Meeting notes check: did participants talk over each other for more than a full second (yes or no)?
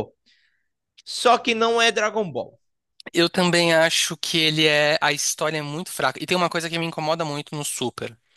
no